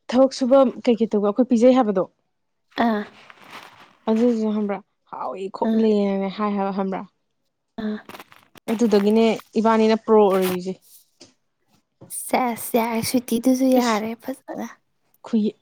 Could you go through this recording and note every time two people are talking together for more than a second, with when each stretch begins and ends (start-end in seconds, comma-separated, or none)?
none